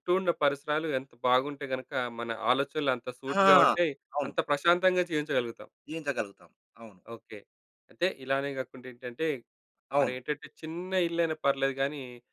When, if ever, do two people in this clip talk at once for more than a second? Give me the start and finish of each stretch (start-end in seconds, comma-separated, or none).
none